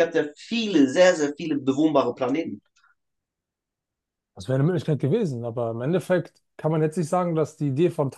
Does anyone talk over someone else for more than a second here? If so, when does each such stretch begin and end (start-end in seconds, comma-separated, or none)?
none